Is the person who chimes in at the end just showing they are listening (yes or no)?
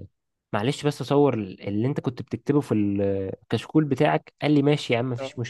yes